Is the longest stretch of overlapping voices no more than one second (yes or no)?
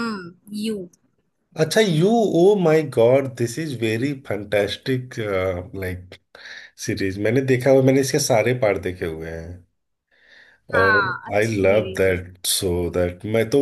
no